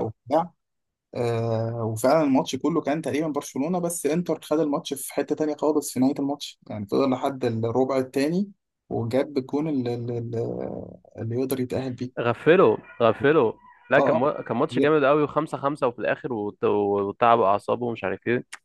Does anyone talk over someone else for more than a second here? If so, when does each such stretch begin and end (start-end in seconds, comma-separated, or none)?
none